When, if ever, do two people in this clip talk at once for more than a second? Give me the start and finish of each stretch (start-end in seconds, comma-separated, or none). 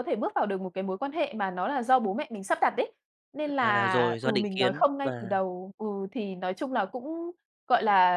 3.6-5.4